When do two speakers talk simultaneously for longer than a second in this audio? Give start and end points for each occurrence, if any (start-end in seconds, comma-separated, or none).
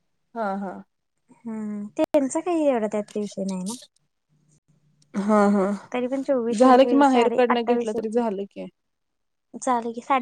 6.6-8.3